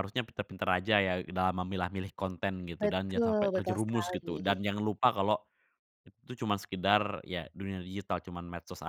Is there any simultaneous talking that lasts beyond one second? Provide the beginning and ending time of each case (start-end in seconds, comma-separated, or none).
2.8-4.4